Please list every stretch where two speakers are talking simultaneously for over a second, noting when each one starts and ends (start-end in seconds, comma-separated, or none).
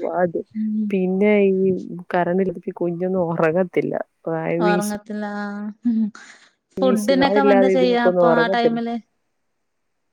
6.8-8.8